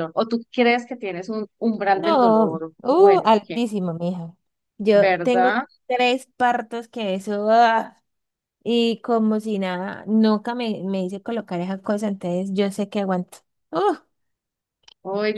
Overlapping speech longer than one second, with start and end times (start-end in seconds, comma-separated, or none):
1.9-3.6